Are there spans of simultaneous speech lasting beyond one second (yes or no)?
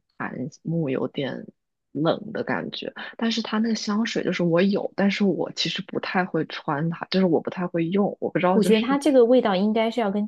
no